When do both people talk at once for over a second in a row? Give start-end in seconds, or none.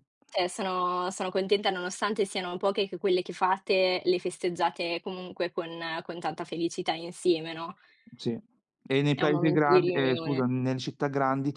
9.1-10.4